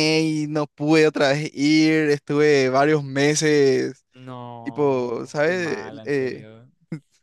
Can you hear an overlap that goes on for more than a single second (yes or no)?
yes